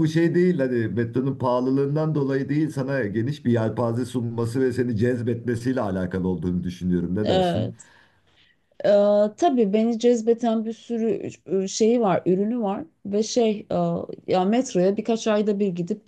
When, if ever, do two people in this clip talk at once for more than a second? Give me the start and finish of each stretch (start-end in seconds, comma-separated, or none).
none